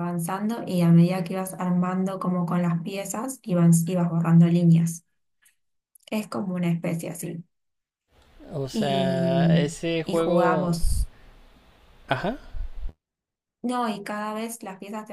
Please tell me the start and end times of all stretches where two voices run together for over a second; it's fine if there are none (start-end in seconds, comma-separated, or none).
8.7-10.7